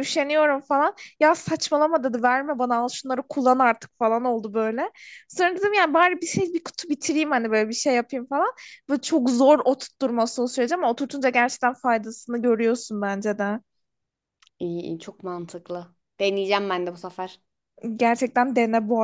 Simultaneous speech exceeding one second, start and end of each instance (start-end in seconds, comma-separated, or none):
none